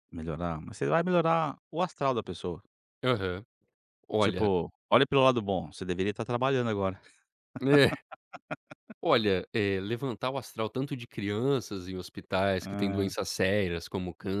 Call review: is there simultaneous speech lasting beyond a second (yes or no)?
no